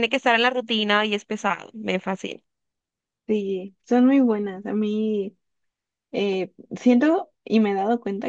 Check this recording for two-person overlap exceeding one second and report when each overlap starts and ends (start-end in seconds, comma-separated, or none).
none